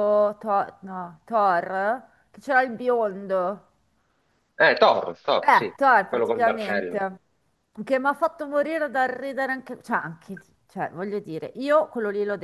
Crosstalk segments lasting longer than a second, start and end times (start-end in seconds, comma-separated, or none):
5.4-7.0